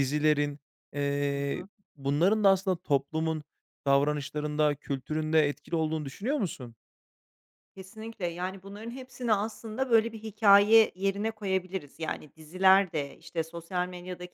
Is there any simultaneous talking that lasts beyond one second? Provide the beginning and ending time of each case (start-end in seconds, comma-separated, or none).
none